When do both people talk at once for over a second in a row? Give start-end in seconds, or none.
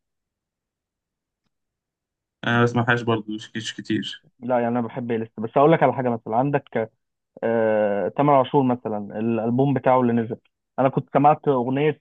none